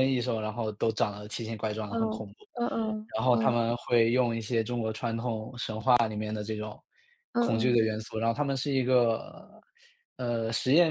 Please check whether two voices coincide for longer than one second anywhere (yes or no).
no